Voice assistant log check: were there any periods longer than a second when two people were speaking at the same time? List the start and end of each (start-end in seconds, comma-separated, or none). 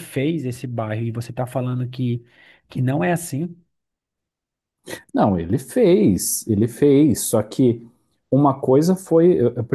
none